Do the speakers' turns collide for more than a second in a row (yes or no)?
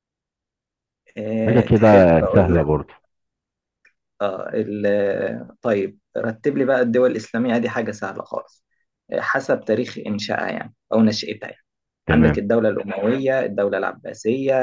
yes